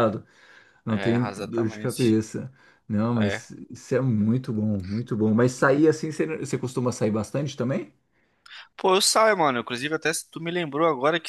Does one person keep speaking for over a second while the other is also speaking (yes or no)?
yes